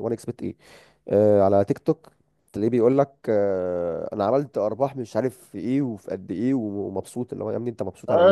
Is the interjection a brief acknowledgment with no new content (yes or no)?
no